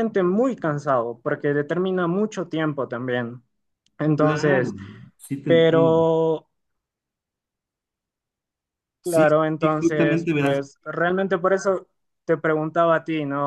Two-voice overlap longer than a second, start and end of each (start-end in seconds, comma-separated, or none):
9.0-10.6